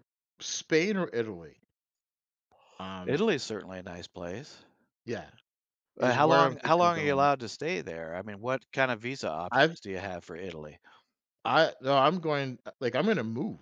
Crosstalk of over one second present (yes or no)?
yes